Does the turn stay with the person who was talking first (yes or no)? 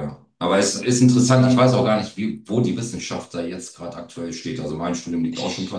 yes